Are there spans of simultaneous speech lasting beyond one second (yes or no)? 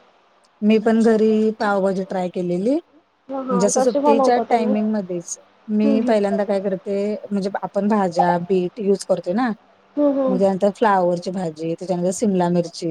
yes